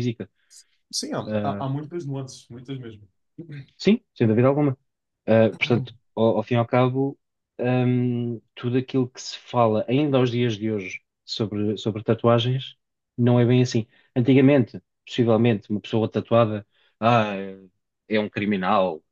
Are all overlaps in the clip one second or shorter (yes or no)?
yes